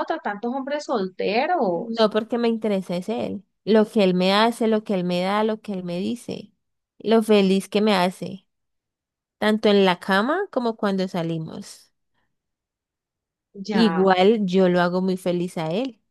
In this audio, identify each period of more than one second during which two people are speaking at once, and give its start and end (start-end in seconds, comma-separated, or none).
none